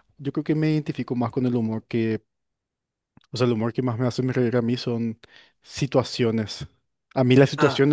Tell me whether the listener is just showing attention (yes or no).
yes